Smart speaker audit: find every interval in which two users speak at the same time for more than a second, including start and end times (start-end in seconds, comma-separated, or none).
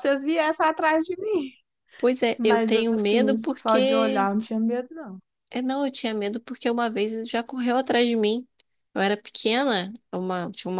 2.4-4.3